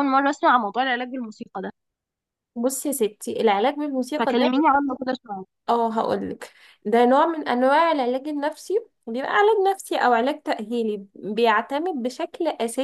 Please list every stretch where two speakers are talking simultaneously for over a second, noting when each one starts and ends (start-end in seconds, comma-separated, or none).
none